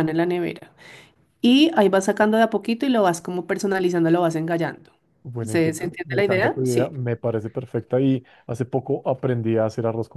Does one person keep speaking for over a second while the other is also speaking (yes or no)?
yes